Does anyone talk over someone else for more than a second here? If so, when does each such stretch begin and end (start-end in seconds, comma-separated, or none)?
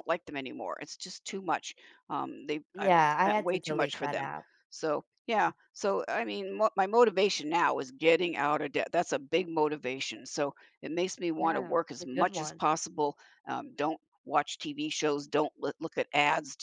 2.8-4.3, 11.4-12.6